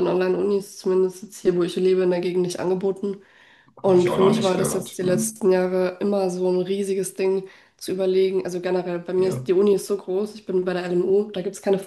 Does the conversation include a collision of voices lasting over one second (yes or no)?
yes